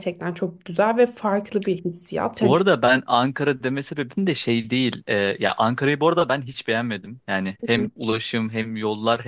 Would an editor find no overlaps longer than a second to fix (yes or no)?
yes